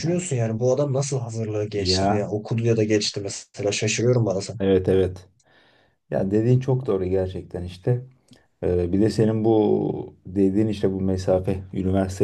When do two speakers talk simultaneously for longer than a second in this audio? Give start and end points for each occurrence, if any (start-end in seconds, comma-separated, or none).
none